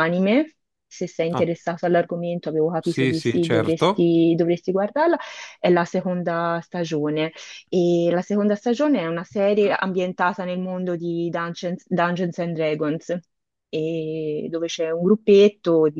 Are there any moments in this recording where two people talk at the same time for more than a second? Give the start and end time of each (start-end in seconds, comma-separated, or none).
2.8-4.1